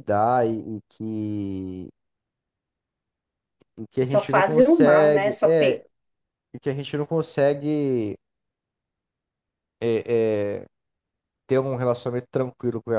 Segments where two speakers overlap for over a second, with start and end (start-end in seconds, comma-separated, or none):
4.1-5.8